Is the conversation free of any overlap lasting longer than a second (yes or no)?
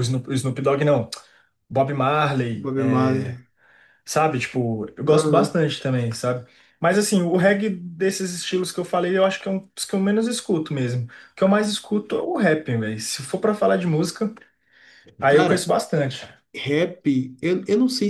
yes